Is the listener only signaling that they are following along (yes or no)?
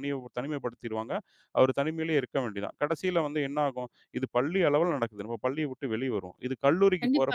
no